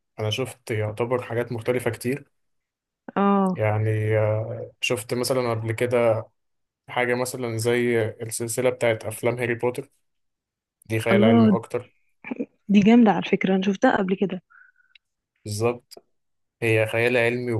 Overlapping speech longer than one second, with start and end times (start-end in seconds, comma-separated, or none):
none